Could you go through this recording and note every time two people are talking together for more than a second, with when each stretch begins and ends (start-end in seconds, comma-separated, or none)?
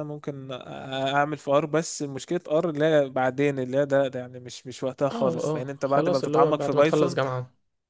5.1-7.2